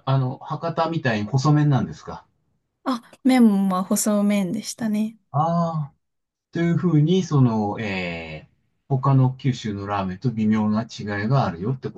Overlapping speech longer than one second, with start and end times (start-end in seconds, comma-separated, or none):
none